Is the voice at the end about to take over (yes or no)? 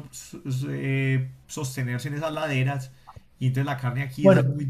no